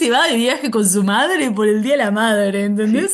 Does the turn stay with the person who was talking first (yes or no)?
no